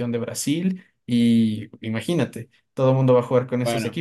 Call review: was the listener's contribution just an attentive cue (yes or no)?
yes